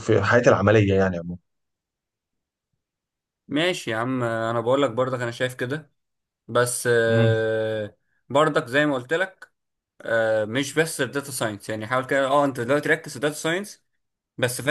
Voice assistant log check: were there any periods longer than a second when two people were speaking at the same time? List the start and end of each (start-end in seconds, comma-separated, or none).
none